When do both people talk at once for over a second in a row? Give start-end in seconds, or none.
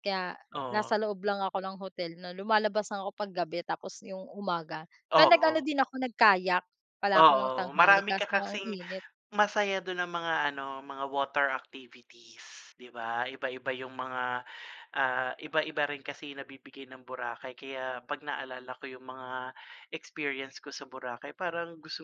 7.2-8.8